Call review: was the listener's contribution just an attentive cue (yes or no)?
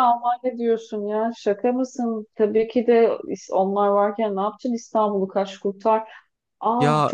no